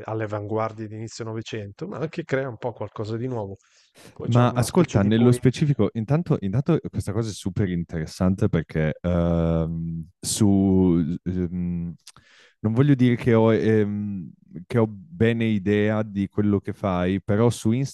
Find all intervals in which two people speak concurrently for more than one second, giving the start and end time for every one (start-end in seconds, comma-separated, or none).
4.2-5.8